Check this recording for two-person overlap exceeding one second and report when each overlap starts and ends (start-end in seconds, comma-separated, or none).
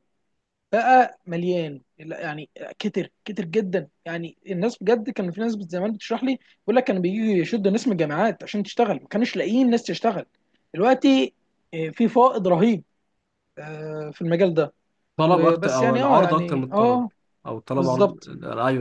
15.2-17.0